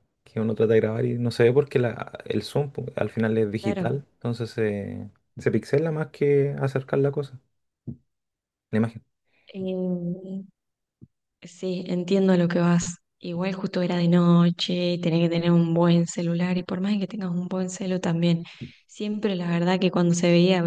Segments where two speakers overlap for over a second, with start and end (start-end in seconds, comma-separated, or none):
none